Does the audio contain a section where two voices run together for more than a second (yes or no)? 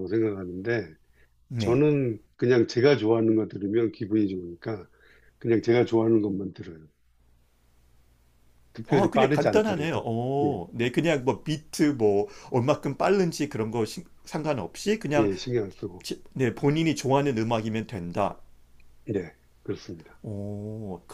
yes